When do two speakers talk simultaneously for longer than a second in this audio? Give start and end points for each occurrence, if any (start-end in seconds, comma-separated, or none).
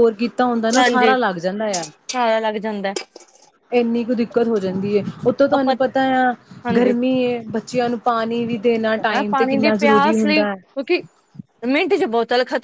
8.9-10.6